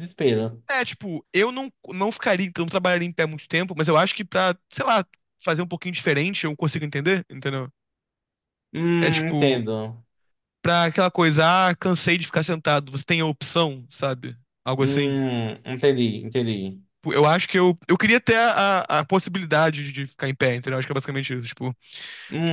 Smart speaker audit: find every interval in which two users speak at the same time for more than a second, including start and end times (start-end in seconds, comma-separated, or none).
none